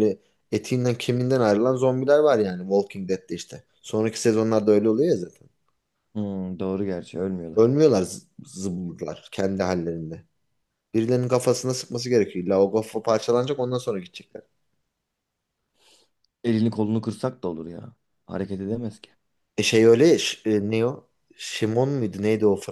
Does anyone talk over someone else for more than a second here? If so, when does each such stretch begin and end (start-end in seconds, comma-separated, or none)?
none